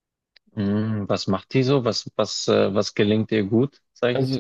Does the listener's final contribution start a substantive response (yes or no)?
yes